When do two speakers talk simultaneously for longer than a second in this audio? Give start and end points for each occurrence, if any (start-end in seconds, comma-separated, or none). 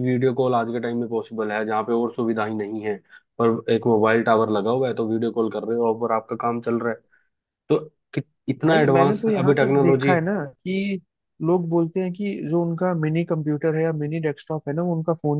8.6-10.1